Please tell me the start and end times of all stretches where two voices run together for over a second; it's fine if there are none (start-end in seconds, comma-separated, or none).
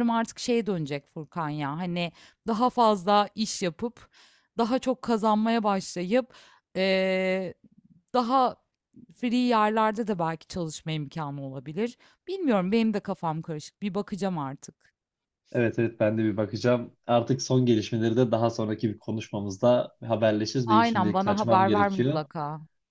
20.7-22.3